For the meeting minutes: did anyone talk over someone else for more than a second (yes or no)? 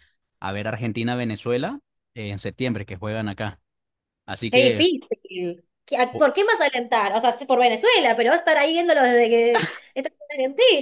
no